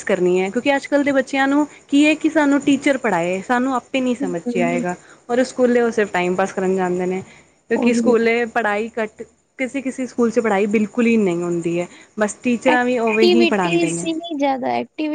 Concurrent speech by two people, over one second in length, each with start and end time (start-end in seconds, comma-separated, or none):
12.7-14.1